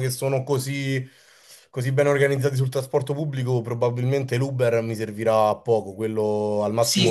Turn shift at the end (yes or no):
yes